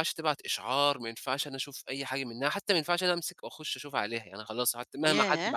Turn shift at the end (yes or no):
no